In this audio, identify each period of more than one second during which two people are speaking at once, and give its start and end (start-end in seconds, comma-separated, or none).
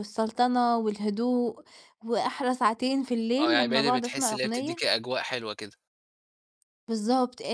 3.4-4.8